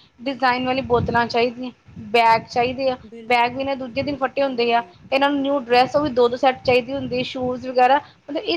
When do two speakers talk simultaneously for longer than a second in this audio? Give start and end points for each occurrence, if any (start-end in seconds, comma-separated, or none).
3.1-4.9